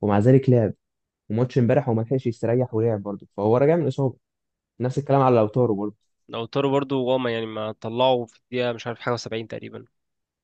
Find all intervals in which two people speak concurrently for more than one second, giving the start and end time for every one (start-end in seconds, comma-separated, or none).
none